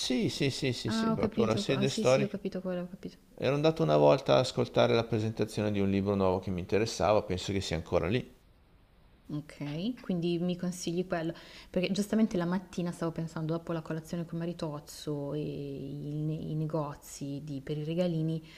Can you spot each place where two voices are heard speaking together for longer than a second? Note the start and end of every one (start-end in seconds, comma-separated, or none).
0.8-2.4